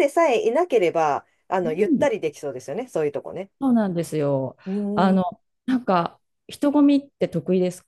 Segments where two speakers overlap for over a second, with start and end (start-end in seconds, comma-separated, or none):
none